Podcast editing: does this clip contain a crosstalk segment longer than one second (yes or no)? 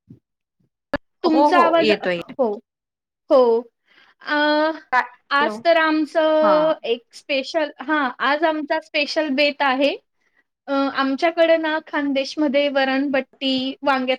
no